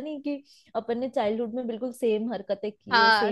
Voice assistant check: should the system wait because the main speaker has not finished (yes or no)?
no